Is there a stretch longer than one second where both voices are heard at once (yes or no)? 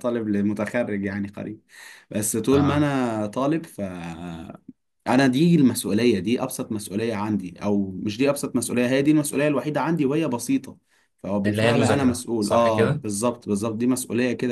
yes